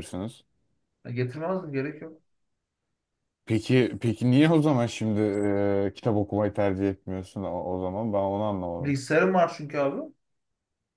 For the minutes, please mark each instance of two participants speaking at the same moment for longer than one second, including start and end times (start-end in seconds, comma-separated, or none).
none